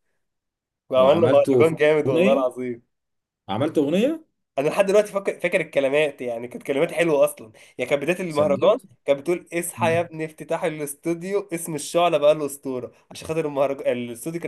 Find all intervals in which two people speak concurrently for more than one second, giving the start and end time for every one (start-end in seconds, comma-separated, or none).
1.0-2.5